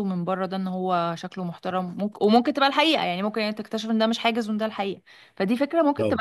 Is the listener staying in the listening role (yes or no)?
no